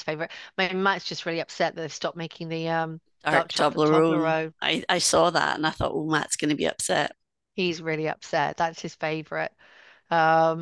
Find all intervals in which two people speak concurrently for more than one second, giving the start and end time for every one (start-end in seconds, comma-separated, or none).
3.2-4.5